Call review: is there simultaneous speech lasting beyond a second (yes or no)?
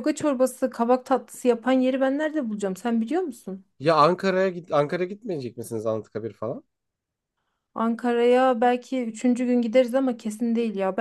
no